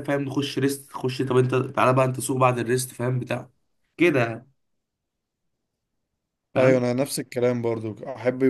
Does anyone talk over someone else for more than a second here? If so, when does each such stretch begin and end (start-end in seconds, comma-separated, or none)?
none